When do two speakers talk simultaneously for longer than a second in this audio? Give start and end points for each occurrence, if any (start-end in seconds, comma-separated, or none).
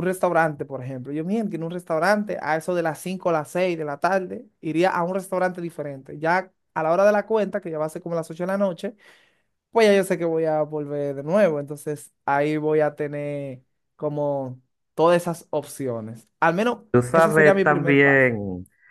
16.9-18.3